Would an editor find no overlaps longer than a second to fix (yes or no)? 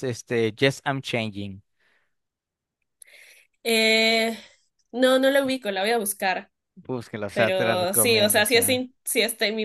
no